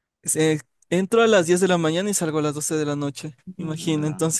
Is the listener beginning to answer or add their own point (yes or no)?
no